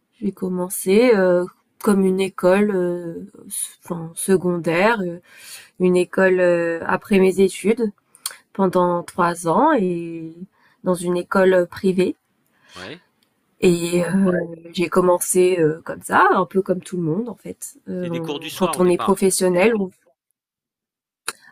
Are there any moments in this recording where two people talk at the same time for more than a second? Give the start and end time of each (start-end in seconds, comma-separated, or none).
18.0-19.3